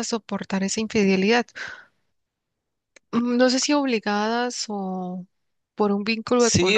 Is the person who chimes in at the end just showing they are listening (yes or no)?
no